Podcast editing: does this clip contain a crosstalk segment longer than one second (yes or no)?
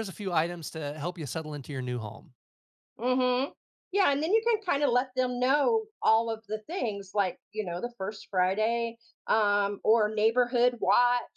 no